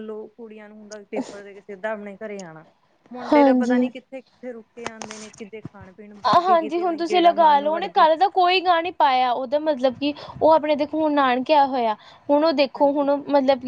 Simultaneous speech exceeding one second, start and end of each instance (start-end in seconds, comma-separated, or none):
6.3-8.0